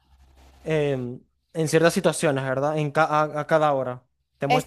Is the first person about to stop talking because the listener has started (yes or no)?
no